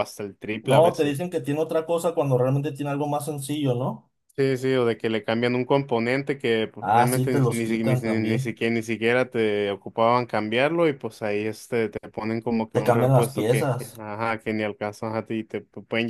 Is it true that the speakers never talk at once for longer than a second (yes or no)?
no